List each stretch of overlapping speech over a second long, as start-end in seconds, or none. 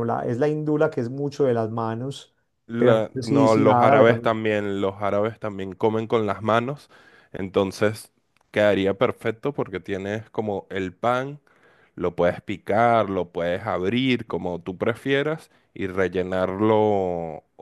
2.8-4.3